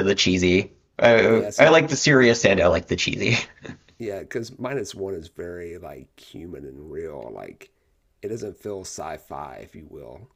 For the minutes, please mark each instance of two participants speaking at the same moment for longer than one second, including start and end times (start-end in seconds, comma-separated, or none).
none